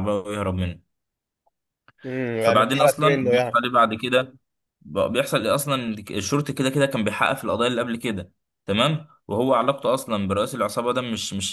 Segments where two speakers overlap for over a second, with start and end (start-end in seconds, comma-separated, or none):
2.4-3.6